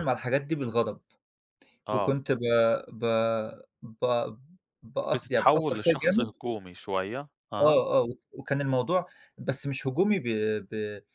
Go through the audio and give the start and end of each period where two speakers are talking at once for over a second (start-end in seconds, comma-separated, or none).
5.1-6.6